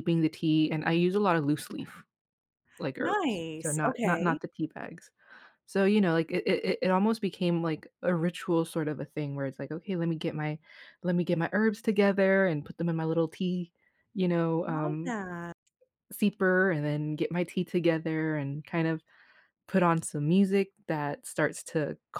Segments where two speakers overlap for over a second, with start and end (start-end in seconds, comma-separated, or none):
3.0-4.4